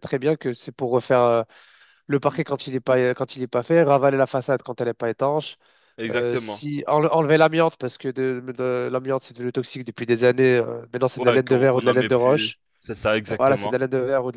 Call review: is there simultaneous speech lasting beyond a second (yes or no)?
yes